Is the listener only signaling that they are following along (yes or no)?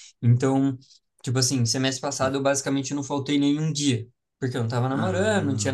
yes